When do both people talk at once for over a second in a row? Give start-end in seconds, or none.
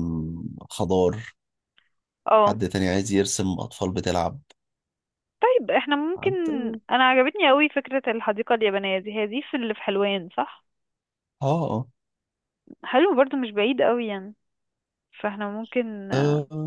none